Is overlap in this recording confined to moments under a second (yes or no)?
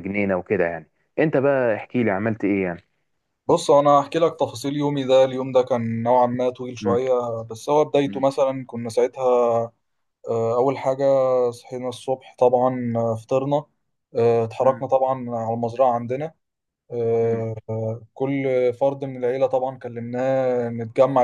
yes